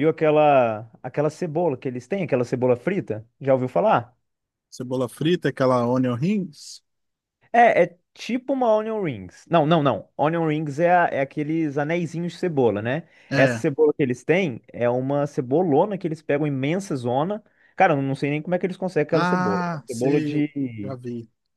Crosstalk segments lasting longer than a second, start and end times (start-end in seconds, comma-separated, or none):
19.1-21.0